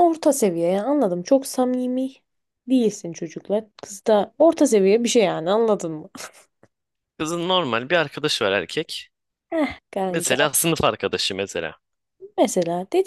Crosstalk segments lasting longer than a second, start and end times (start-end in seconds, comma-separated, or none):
none